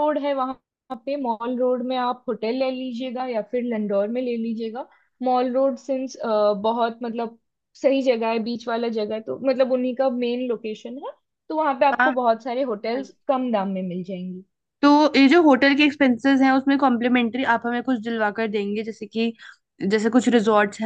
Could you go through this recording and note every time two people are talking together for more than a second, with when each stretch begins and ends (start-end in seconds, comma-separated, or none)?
none